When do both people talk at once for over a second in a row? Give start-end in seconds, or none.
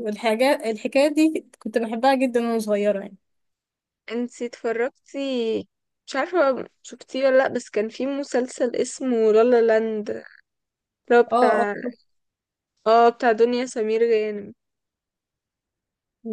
none